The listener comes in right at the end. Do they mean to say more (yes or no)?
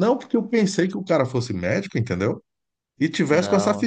no